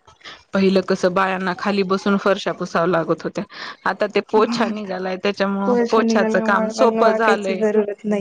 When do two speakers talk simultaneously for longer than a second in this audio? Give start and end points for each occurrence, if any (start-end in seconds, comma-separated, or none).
5.7-7.6